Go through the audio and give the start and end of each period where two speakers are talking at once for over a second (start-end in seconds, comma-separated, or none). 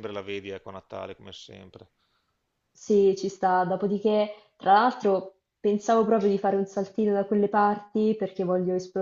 none